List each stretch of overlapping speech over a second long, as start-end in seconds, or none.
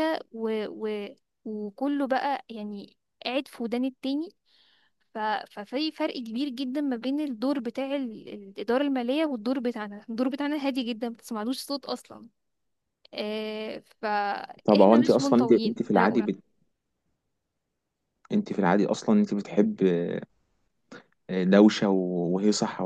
14.6-16.2